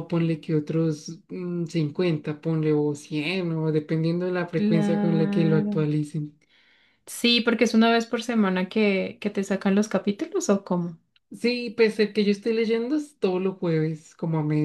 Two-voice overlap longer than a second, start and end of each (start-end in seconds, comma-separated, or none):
4.5-5.9